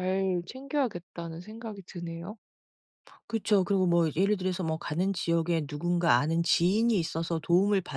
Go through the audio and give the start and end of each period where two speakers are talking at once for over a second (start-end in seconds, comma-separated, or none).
none